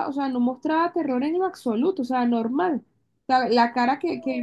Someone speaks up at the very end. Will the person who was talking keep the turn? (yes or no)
yes